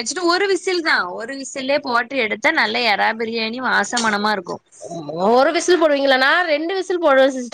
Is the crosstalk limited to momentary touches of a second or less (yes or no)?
yes